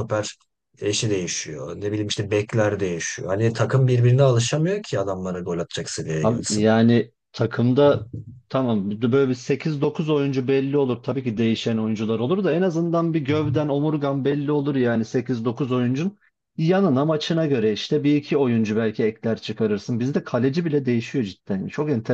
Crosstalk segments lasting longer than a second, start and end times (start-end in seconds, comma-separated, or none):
none